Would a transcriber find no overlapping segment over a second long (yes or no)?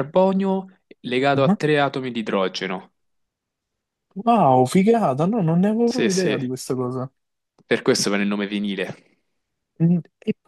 yes